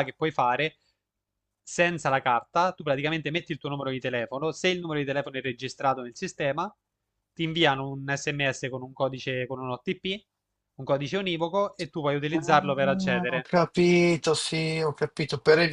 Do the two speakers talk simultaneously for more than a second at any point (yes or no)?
yes